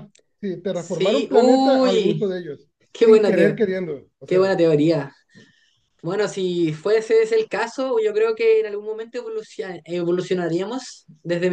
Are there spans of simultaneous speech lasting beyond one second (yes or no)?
yes